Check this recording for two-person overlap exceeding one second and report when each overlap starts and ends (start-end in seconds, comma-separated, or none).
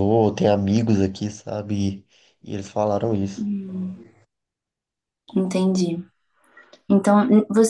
none